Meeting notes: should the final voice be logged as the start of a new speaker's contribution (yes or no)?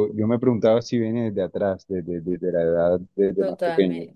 yes